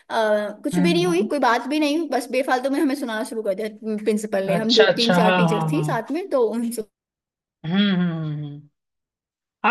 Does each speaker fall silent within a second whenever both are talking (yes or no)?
no